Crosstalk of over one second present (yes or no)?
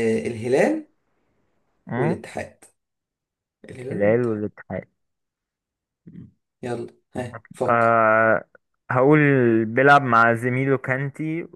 no